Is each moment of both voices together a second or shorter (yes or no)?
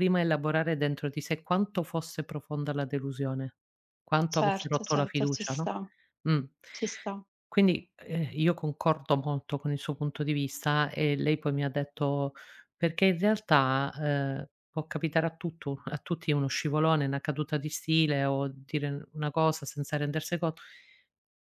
no